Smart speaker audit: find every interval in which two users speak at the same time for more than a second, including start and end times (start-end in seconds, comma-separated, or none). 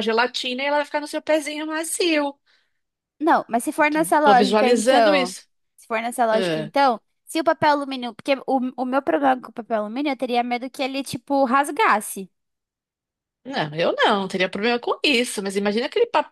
3.8-5.3